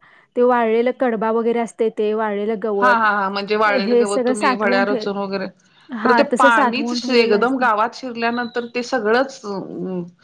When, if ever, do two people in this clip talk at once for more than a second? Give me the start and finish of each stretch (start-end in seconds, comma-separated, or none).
6.0-7.7